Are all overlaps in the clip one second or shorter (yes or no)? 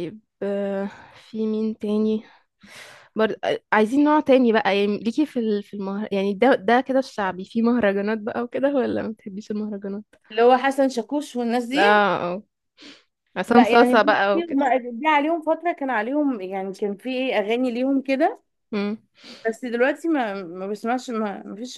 no